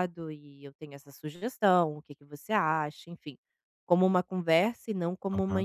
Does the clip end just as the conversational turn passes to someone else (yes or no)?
yes